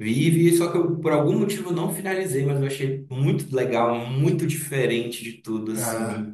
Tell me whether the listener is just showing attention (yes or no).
yes